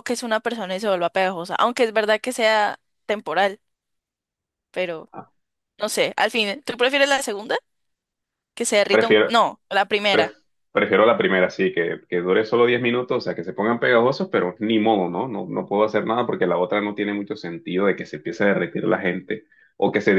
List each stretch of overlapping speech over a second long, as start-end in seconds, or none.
none